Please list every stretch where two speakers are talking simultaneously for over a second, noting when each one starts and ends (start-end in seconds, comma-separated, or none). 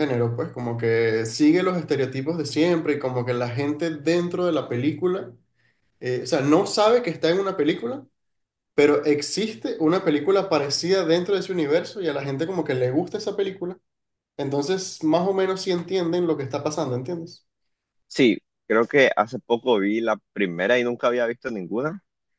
none